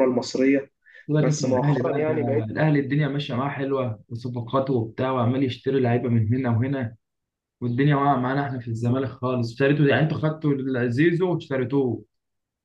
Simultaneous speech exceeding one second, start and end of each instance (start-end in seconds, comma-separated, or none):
1.2-2.5